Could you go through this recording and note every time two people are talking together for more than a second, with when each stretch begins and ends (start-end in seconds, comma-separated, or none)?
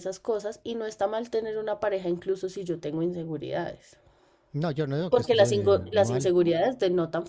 5.1-6.3